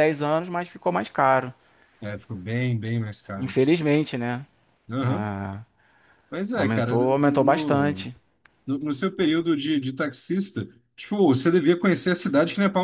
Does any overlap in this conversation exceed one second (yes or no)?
yes